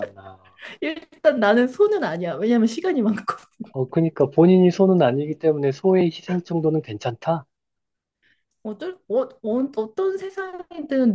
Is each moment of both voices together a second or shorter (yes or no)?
yes